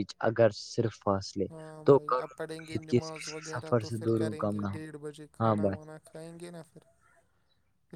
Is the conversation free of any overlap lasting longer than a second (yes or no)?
no